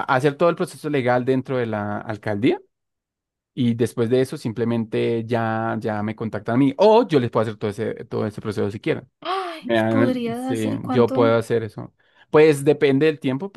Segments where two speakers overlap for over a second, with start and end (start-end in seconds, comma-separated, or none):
9.6-11.3